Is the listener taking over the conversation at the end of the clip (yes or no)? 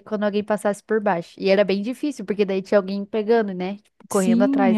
yes